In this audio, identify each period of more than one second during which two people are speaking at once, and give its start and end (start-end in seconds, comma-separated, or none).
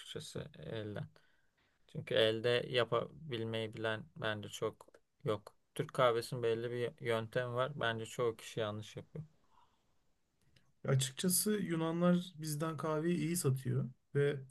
none